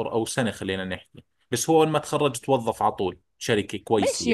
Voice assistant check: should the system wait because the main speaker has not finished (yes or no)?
no